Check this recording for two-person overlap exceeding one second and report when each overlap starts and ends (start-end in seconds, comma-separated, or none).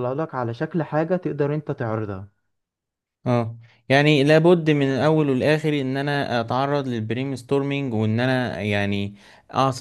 none